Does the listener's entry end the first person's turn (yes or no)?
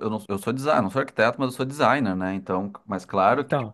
no